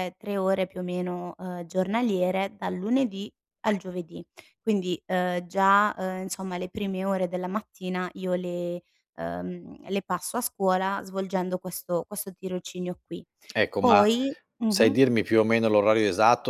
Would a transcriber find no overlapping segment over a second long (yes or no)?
yes